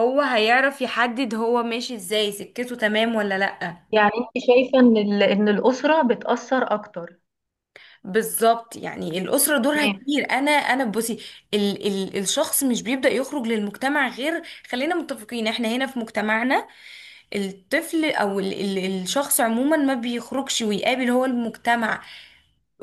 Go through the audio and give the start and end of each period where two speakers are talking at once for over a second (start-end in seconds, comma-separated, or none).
none